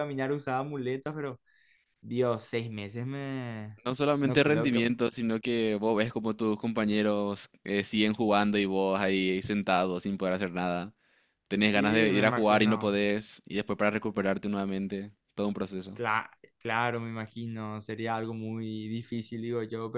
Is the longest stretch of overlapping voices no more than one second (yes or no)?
no